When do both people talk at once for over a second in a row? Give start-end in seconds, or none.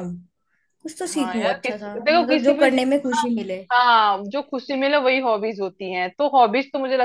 1.1-3.3